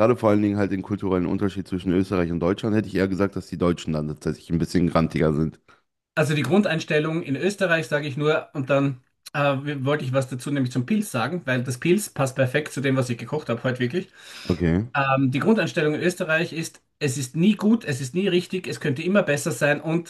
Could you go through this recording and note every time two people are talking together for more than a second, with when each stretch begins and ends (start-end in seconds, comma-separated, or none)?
none